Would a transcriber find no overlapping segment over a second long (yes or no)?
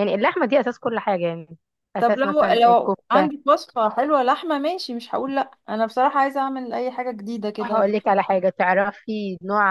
no